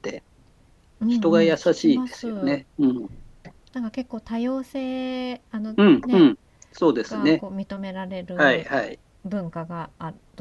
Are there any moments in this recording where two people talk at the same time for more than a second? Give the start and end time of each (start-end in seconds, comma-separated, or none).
1.1-2.6